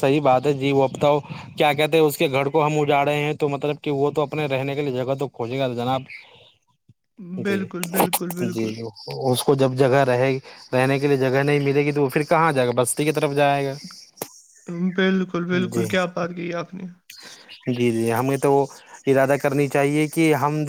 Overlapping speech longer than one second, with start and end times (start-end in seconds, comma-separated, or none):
none